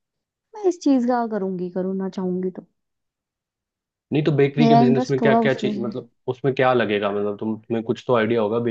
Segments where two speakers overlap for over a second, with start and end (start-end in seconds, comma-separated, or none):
4.6-6.0